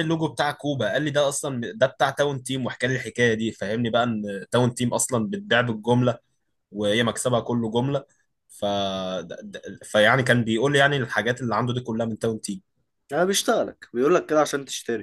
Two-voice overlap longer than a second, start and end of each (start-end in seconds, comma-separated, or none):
none